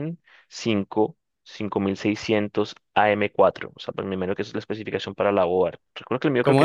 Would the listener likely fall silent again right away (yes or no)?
no